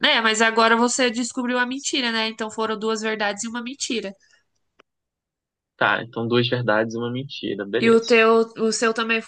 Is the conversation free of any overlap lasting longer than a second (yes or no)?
yes